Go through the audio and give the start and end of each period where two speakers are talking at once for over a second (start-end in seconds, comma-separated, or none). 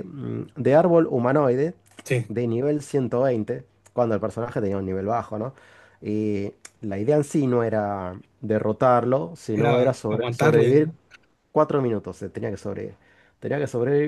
9.5-10.9